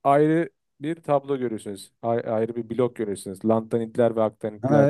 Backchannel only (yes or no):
no